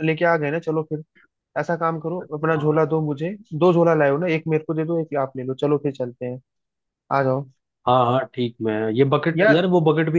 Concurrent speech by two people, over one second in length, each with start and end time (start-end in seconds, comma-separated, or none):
none